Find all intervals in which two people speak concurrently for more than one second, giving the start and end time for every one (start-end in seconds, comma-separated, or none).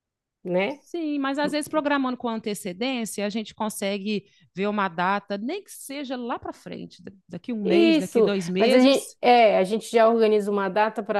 7.7-9.2